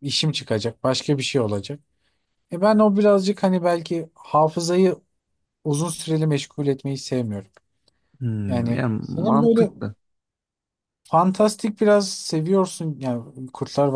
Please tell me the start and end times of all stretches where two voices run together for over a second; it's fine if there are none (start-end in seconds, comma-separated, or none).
8.5-9.7